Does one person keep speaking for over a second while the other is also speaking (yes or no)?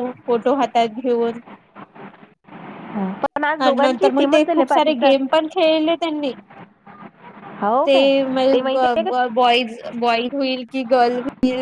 yes